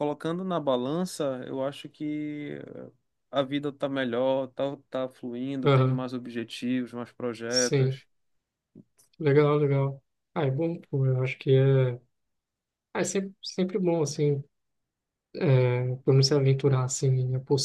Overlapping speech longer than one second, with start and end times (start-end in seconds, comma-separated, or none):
none